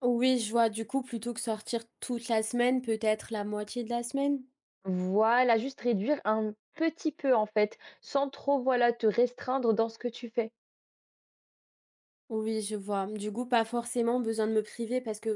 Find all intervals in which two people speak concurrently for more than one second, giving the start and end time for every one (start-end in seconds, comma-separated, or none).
none